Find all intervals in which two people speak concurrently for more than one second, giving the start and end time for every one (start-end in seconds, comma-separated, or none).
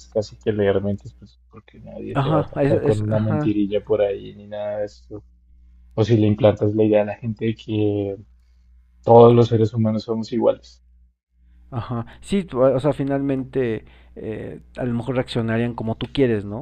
2.1-3.5